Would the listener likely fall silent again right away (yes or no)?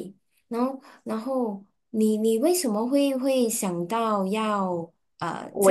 no